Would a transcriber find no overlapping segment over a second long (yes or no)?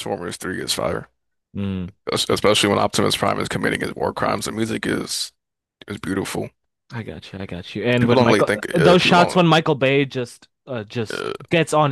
no